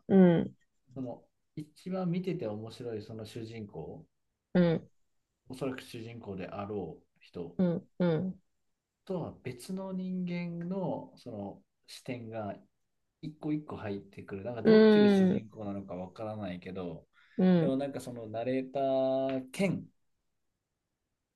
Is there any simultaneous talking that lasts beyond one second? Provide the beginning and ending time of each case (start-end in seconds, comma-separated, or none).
none